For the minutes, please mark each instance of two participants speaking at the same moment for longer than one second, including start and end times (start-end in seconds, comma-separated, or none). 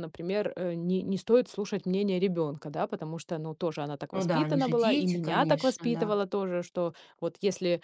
4.1-6.2